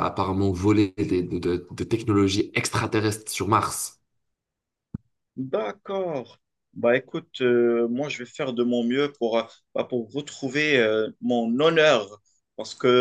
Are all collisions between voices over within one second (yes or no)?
yes